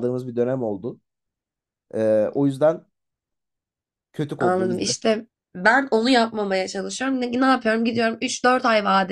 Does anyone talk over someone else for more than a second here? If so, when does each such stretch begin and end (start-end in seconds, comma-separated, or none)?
none